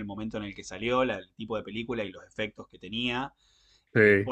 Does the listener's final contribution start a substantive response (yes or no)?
no